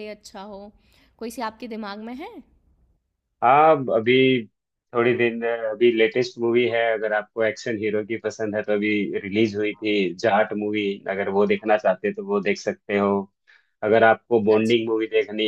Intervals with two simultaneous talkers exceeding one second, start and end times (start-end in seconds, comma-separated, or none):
none